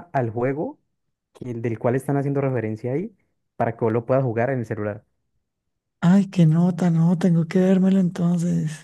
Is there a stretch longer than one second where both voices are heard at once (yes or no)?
no